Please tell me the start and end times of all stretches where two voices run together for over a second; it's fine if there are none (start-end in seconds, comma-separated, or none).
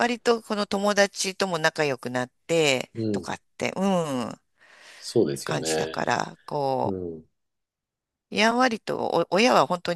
none